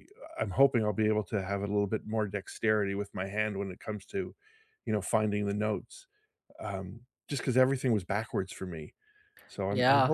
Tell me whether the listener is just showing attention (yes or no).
no